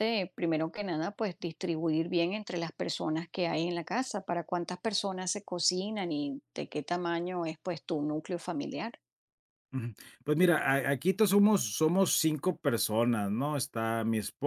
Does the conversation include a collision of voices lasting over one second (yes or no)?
no